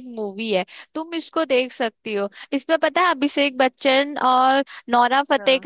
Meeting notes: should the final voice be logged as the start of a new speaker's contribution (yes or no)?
no